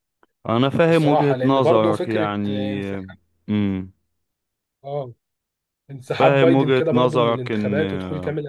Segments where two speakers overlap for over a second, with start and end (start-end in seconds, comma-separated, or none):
0.9-2.8, 6.2-7.8